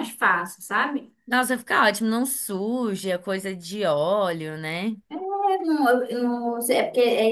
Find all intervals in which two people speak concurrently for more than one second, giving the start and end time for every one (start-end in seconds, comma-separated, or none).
none